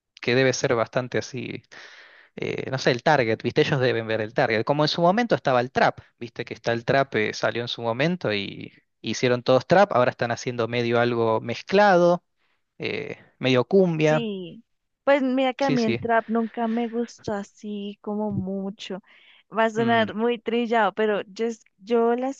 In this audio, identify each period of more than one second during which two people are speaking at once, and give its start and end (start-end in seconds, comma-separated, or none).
none